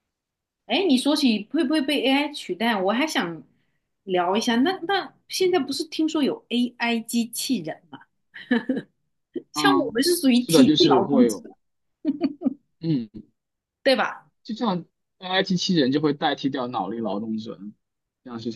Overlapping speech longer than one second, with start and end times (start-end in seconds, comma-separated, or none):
9.5-11.4